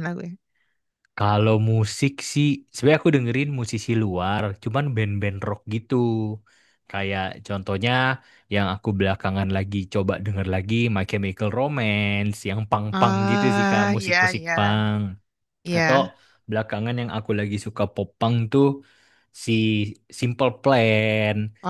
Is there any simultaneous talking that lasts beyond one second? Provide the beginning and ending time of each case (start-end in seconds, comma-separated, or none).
12.9-14.9